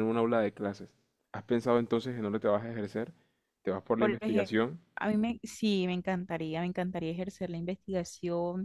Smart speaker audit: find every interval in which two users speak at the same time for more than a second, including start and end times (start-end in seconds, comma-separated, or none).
none